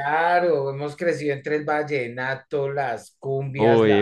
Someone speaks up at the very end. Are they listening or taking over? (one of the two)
taking over